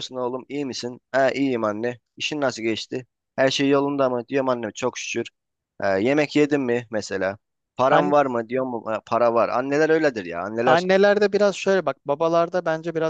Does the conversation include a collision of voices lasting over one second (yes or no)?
no